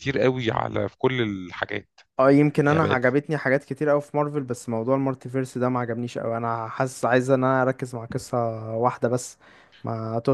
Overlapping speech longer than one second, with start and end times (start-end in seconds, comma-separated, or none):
none